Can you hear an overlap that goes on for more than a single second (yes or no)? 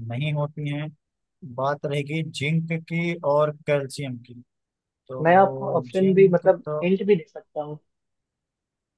yes